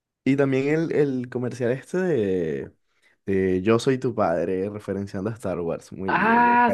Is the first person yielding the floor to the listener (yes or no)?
yes